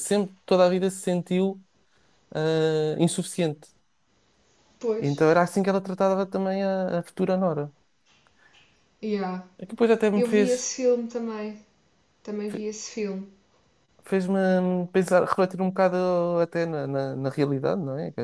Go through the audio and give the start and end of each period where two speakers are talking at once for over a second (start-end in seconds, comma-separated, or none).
none